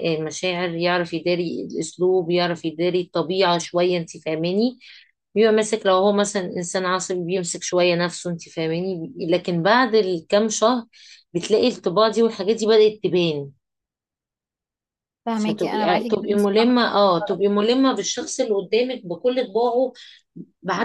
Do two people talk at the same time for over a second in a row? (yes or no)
yes